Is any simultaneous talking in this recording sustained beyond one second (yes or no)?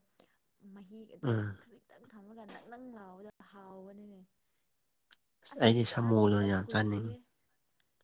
yes